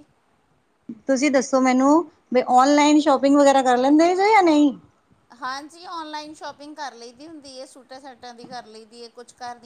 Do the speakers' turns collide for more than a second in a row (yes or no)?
no